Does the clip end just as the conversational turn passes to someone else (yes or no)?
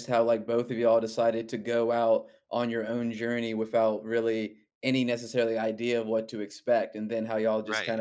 no